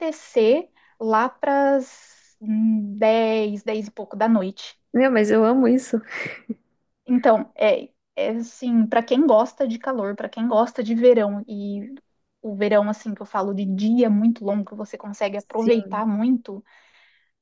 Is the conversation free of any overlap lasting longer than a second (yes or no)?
yes